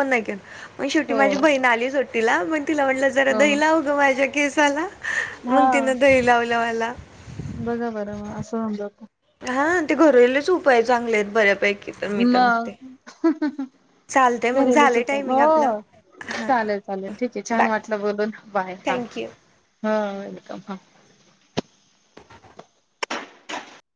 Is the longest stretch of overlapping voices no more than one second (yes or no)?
no